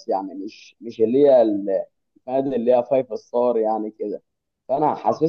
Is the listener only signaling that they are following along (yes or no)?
yes